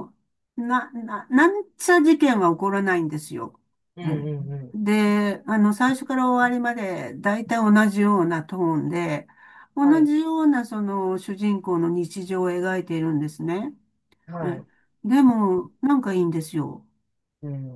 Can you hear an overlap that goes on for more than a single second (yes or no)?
no